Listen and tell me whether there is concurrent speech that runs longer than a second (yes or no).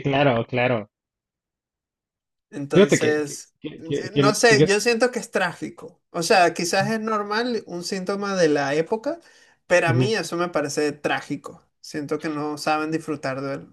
yes